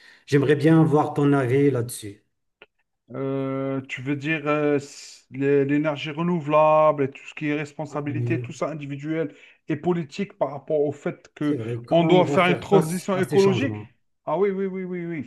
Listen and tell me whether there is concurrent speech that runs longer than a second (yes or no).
yes